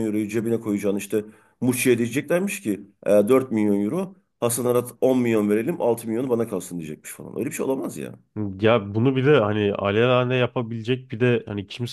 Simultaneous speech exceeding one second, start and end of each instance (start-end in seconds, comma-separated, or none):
none